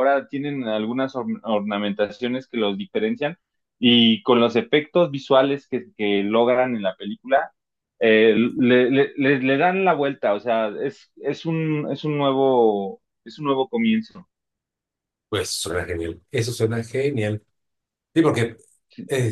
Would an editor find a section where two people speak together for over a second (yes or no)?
no